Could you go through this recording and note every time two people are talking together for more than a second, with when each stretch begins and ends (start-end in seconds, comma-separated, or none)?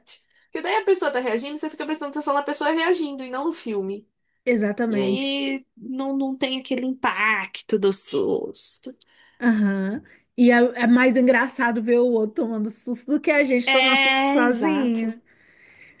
13.7-15.2